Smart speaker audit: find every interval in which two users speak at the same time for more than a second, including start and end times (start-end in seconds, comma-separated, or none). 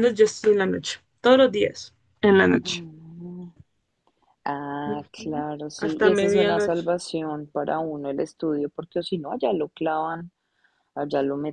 4.8-6.9